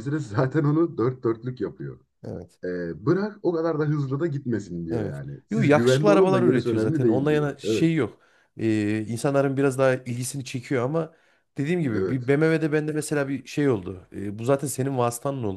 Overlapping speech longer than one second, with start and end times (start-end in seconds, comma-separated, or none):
4.9-7.9